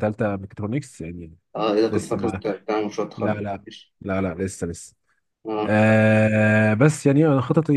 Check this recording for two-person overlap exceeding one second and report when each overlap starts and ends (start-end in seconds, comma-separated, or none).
none